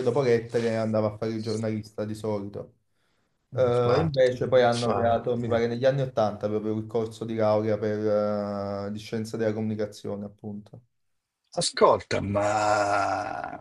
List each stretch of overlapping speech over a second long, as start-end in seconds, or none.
3.6-5.5